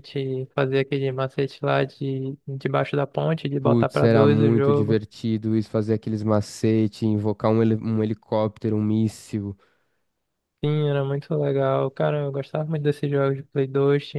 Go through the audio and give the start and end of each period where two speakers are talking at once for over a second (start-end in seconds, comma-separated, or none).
3.6-5.0